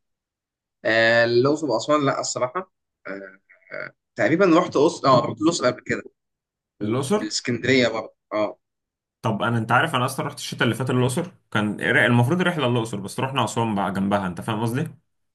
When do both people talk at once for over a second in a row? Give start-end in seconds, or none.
none